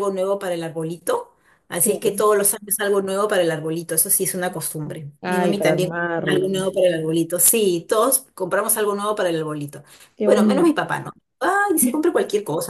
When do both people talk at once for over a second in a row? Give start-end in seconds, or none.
5.2-6.7